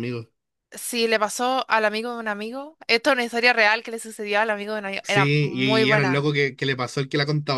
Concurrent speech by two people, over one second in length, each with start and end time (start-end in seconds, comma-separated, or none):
5.0-6.3